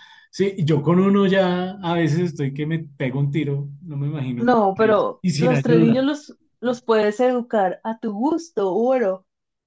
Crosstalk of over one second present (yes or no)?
yes